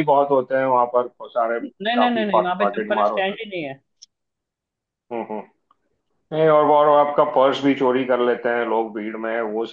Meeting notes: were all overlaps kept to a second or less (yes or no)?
no